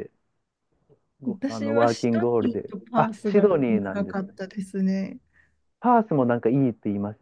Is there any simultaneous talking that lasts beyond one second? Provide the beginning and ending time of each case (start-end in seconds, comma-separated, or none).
1.2-4.3